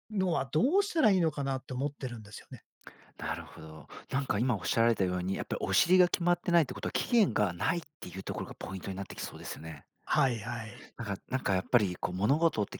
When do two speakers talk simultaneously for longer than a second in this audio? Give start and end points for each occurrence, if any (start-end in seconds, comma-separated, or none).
none